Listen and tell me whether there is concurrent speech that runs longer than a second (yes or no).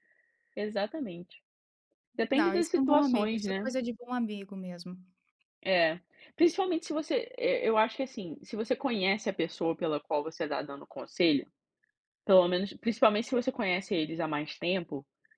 yes